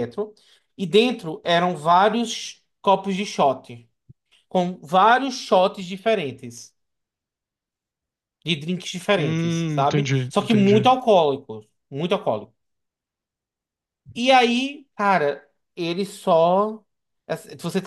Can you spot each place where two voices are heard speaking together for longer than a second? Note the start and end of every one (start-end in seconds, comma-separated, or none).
9.2-10.9